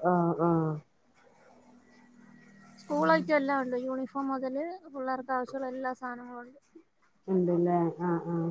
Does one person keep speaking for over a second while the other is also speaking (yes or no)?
no